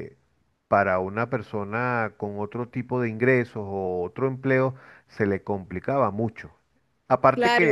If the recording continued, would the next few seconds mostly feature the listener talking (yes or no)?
yes